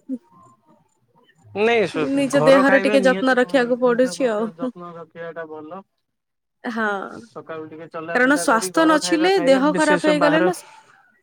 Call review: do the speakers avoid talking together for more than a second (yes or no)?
no